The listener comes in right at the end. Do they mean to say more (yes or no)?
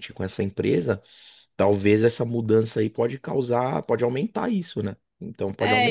yes